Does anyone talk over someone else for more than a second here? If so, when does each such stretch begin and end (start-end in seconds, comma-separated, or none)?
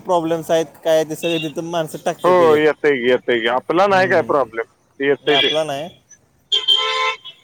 3.9-5.5